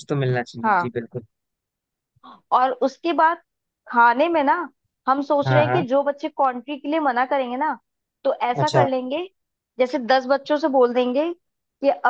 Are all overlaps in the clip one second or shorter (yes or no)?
yes